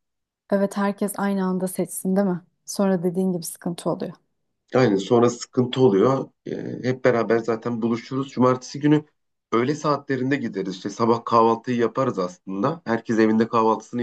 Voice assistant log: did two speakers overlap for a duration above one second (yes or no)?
no